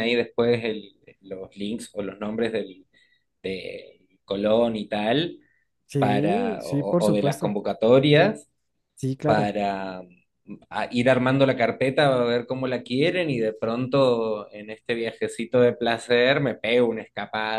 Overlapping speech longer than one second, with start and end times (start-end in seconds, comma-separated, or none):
6.0-7.6